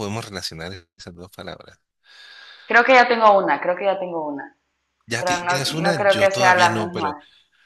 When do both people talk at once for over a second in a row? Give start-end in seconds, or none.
5.2-7.2